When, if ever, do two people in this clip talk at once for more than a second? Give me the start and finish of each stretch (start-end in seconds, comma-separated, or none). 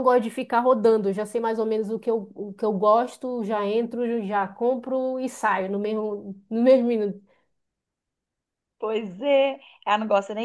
none